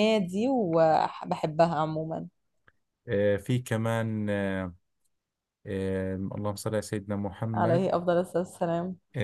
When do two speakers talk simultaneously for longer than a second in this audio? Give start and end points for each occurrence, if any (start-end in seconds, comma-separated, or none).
none